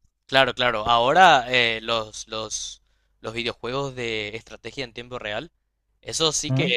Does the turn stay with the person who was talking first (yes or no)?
yes